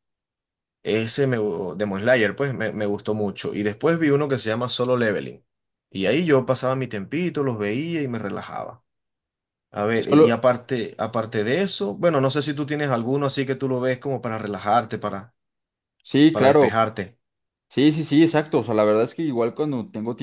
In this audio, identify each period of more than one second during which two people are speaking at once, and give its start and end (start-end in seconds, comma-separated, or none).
none